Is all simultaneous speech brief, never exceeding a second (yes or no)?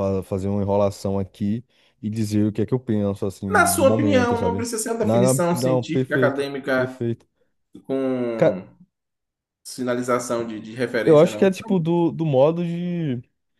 no